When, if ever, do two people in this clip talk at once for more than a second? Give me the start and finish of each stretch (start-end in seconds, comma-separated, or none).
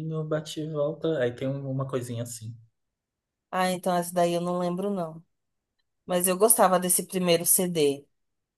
none